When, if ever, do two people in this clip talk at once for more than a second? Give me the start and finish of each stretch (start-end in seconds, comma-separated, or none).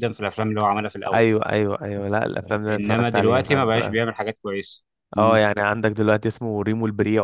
2.7-4.0